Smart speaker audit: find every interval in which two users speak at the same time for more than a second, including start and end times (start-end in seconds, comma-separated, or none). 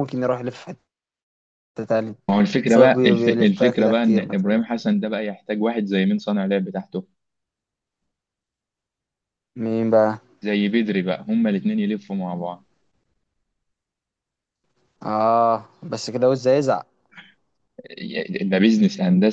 2.6-4.6